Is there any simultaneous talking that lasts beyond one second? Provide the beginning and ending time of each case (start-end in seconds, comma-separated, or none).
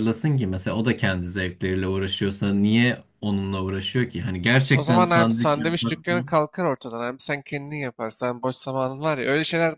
4.7-6.0